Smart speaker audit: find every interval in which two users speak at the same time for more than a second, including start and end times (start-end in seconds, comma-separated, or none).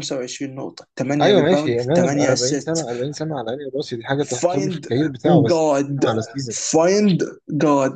1.2-2.8